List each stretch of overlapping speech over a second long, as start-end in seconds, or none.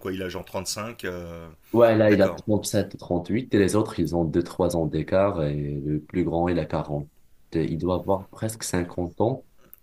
none